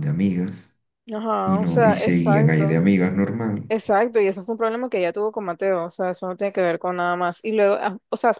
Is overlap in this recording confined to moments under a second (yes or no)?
no